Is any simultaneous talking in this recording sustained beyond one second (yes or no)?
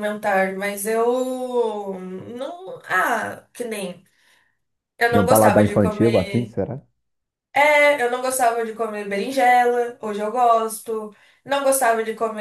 yes